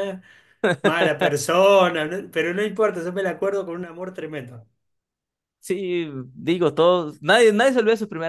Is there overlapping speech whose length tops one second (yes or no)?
no